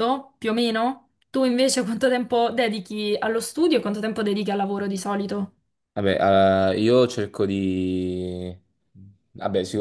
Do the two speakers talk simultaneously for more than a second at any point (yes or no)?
no